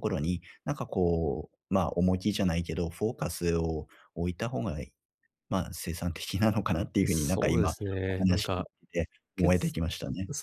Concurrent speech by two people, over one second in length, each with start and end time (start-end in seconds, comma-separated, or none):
7.1-8.7